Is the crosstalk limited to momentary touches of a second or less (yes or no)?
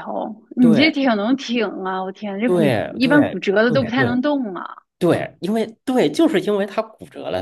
no